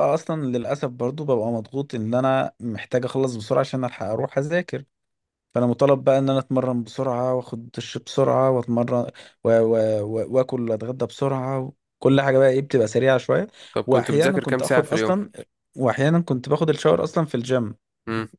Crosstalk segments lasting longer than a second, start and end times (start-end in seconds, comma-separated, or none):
13.9-15.1